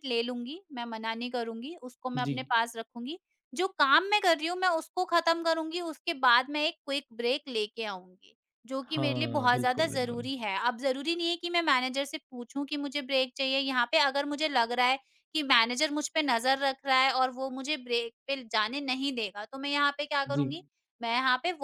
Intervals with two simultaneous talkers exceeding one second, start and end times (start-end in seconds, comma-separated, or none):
8.9-10.3